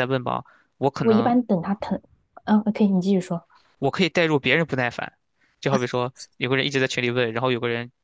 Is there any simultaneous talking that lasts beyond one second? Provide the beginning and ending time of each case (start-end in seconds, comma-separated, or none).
none